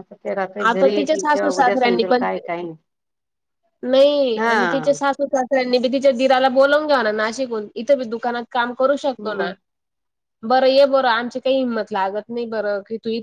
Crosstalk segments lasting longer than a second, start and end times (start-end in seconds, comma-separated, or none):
0.7-2.3